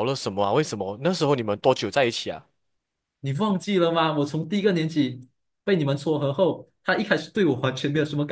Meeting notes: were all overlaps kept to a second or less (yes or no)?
yes